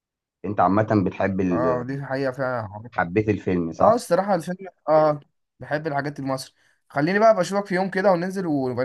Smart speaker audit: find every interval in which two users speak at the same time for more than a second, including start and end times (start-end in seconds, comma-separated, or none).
none